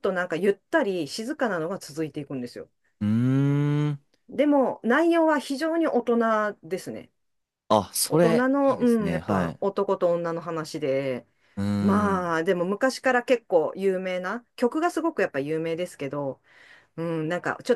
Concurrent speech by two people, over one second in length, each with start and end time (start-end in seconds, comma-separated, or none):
8.0-9.6